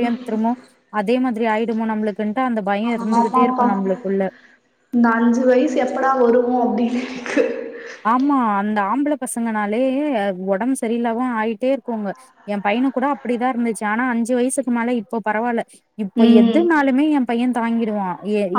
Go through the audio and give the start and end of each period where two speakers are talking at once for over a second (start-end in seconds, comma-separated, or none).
none